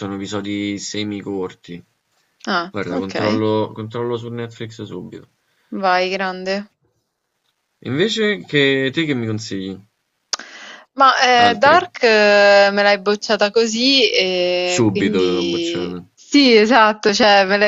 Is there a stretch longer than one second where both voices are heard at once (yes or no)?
yes